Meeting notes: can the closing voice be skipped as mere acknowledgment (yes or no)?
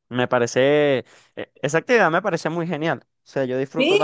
yes